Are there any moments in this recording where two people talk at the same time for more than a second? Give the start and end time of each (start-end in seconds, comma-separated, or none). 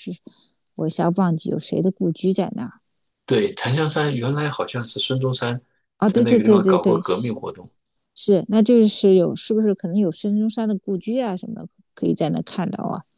6.1-7.4